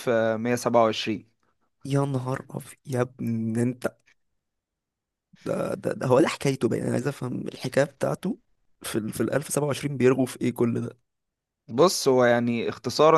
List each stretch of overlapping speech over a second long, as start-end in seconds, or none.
none